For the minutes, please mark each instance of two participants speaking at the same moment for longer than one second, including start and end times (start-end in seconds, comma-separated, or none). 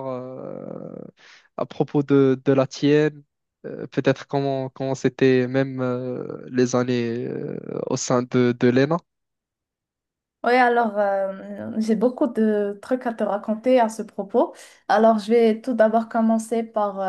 none